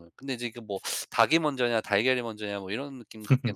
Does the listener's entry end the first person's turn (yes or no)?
yes